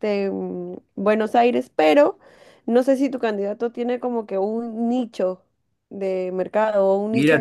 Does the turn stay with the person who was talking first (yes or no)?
no